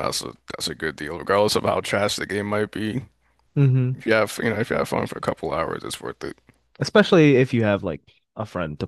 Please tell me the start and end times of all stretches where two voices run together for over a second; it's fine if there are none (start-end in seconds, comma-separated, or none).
none